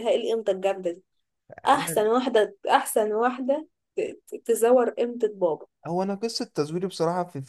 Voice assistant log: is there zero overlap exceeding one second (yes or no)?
yes